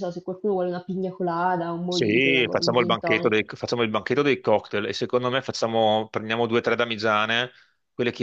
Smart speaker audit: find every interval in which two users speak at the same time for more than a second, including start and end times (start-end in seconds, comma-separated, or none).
1.9-3.5